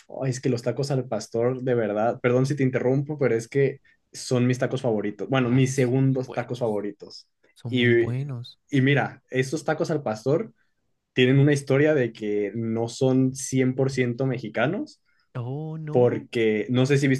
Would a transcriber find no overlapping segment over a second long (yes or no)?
no